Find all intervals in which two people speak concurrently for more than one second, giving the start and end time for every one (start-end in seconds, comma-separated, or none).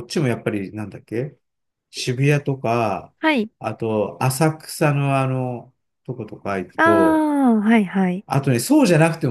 none